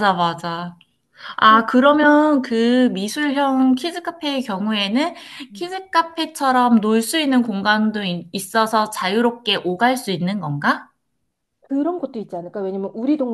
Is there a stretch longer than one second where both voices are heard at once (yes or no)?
no